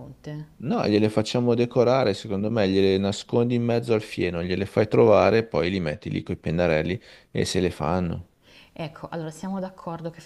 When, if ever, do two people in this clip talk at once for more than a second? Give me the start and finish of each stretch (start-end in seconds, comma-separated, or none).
none